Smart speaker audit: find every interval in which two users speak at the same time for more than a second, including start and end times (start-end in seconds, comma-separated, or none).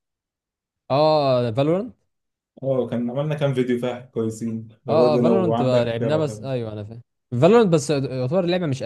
4.9-6.5